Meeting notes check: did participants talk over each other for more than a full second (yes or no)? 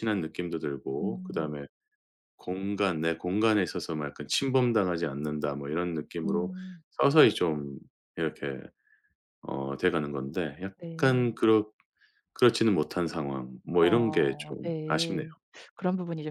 yes